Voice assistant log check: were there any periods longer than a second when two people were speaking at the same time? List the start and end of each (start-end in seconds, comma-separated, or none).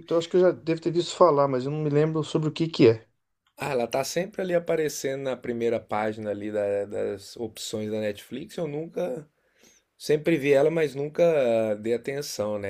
none